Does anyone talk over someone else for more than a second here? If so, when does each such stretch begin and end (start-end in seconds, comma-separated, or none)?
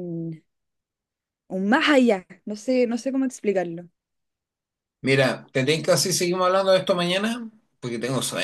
none